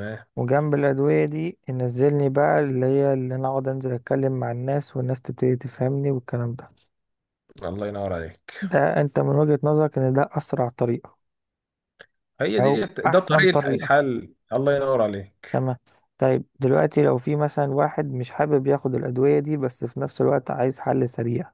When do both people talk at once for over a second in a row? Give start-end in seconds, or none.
12.6-13.9